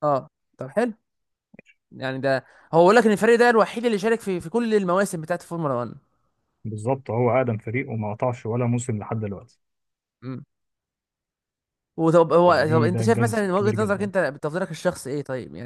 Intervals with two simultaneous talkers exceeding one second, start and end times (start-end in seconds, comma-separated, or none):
12.4-14.1